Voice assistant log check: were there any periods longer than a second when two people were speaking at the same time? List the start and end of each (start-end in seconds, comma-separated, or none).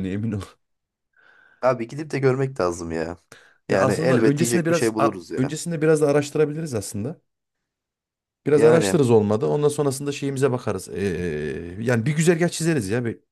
3.7-5.5